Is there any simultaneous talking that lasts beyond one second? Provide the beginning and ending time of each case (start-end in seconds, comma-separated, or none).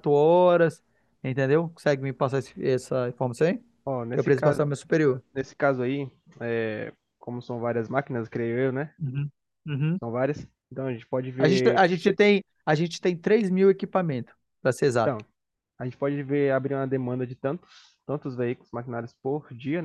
none